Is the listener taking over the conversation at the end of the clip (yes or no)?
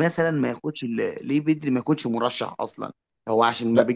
no